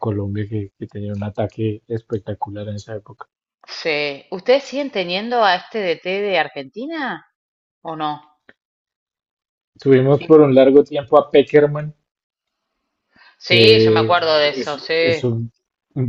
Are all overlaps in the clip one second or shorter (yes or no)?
no